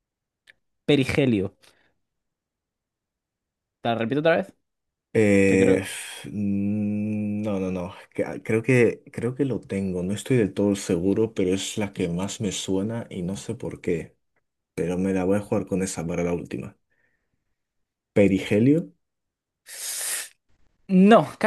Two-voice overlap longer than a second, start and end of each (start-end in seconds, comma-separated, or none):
none